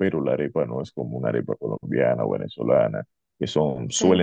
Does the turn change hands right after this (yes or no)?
no